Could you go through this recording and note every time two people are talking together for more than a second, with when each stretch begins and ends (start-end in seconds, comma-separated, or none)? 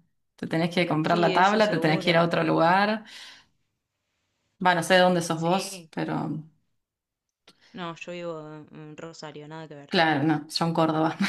1.0-2.3